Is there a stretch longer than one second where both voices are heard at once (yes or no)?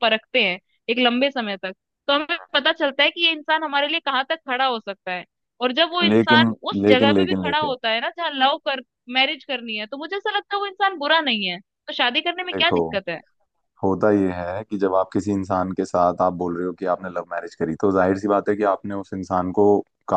yes